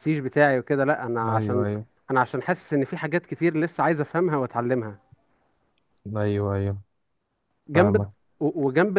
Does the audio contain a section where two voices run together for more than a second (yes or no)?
no